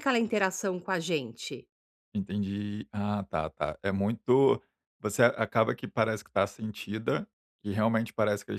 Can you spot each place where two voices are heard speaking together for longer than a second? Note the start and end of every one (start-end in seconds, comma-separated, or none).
none